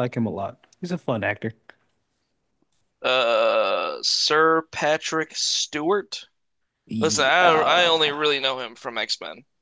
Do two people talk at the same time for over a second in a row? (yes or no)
yes